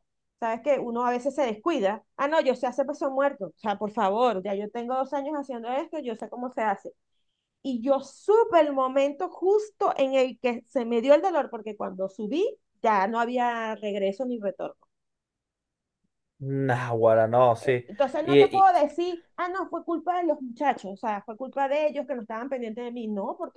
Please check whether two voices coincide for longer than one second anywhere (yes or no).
no